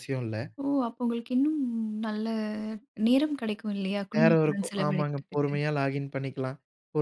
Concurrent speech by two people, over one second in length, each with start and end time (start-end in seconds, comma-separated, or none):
4.2-5.5